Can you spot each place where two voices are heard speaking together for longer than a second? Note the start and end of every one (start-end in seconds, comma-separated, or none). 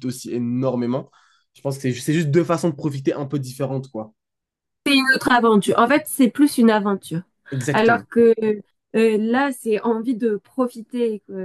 none